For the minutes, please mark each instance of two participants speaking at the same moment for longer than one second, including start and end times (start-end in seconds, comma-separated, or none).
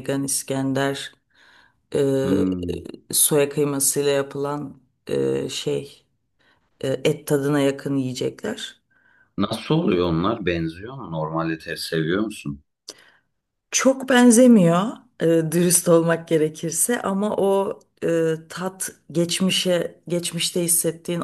none